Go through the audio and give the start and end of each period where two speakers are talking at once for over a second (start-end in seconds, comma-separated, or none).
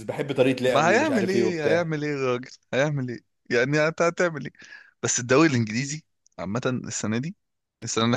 0.7-1.9